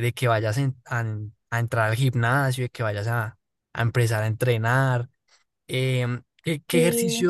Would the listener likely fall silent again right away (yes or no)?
yes